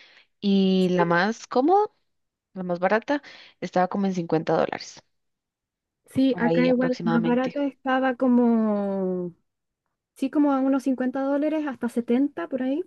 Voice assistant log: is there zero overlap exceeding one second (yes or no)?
no